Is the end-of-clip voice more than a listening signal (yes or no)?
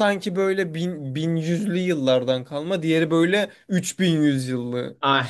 yes